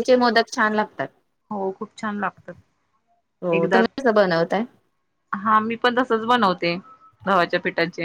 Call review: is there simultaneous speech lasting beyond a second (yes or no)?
no